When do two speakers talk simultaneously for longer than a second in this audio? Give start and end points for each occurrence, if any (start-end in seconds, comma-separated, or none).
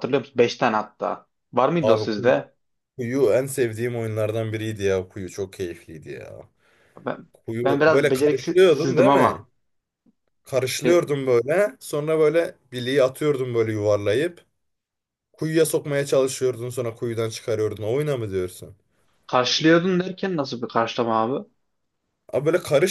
7.6-9.4